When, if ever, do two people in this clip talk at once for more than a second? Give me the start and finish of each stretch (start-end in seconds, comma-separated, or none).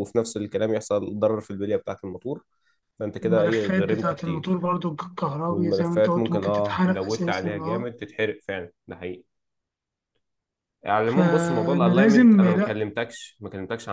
3.2-4.6, 5.5-7.9, 11.0-12.9